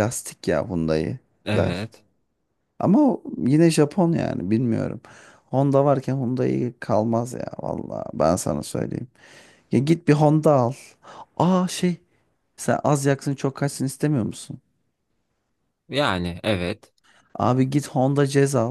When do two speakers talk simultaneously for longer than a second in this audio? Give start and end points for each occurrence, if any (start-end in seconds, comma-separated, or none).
none